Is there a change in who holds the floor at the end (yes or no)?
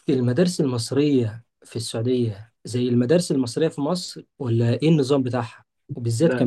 no